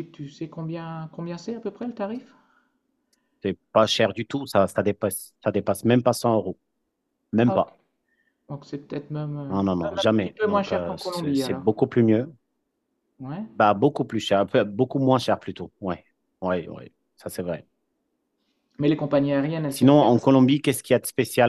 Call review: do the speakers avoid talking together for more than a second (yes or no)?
no